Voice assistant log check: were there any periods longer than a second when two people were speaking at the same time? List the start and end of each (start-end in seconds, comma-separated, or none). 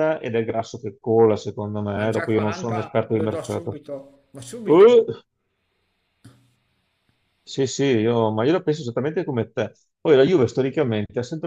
1.9-3.8